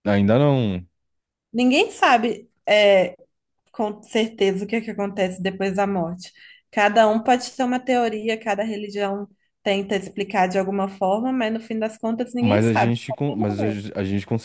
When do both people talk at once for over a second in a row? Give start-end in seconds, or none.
12.4-13.8